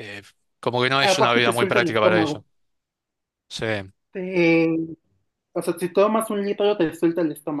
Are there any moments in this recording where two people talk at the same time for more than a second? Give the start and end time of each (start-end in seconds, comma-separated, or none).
1.0-2.4